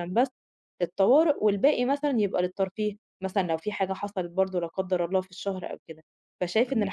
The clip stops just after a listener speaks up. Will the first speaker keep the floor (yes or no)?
yes